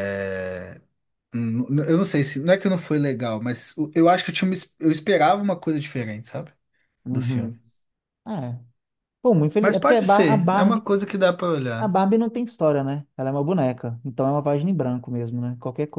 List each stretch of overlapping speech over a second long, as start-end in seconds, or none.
9.6-10.8